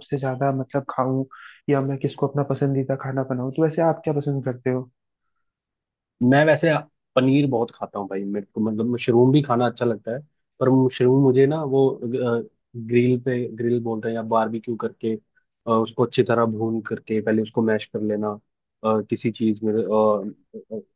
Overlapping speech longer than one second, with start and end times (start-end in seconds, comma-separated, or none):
none